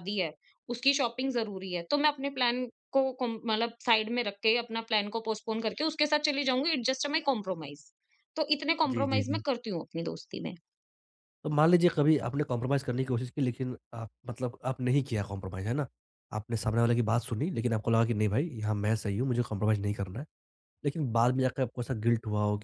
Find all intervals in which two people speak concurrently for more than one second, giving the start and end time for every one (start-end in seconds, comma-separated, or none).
none